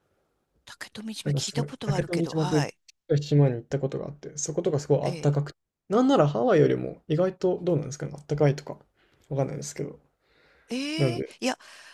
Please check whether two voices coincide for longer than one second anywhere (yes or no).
yes